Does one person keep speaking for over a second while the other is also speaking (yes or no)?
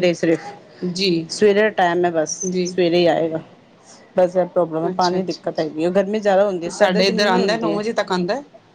yes